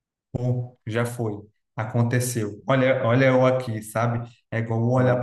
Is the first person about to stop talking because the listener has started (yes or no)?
no